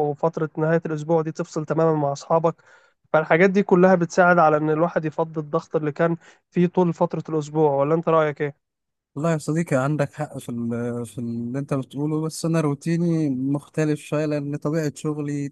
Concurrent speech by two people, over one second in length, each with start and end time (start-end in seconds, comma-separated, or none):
none